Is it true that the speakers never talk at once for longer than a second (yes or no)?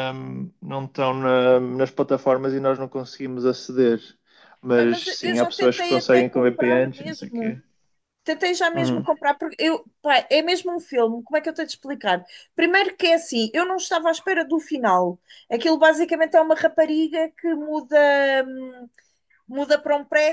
no